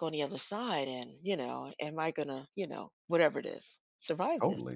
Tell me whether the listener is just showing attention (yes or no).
no